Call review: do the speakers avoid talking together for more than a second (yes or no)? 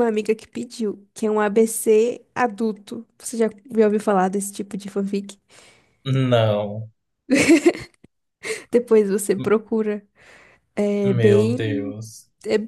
yes